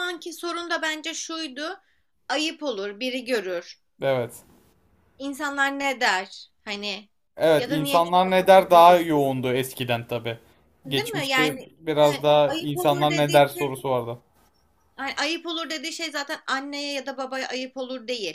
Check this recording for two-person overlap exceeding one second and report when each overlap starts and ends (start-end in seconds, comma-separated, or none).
7.6-9.4, 10.9-13.8